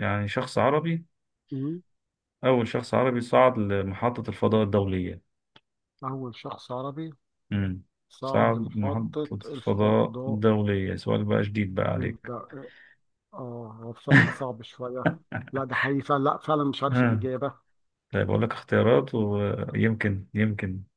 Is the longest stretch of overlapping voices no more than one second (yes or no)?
no